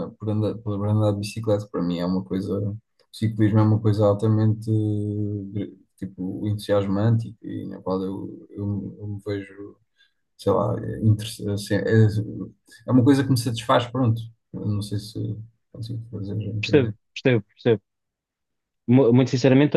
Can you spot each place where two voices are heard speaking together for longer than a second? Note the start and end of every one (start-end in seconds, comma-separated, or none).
none